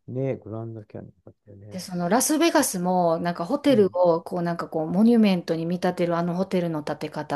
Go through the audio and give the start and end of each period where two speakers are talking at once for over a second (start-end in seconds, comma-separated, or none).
none